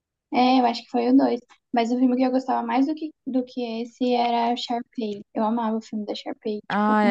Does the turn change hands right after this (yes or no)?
yes